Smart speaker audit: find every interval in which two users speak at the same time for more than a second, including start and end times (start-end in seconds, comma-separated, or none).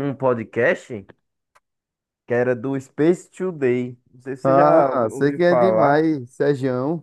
4.4-6.0